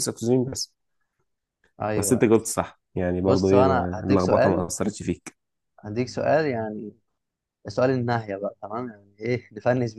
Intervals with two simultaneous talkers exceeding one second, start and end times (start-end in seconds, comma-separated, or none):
3.2-4.7